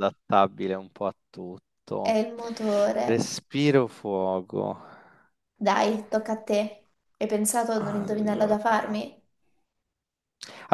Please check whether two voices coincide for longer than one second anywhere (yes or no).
yes